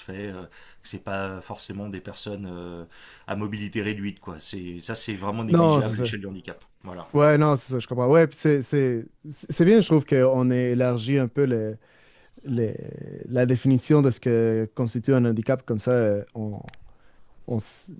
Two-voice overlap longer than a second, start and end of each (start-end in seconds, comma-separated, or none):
none